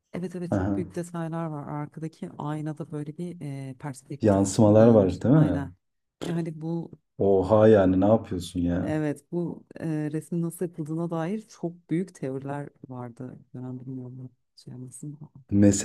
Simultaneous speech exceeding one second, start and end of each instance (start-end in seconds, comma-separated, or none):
4.2-5.6